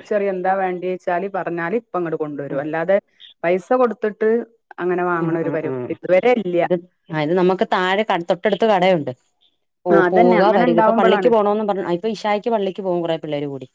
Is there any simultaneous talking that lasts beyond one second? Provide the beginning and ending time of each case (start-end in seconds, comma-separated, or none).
9.9-11.3